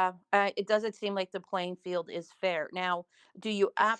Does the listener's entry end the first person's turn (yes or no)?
no